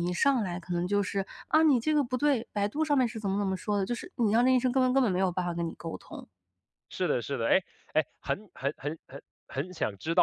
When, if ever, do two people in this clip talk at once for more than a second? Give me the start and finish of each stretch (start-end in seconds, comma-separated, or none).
none